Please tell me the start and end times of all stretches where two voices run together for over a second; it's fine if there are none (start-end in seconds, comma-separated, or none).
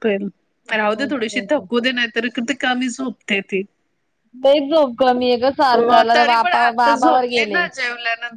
5.7-7.7